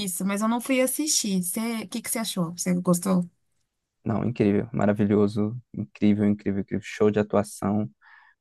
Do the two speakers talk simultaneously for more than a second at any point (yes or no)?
no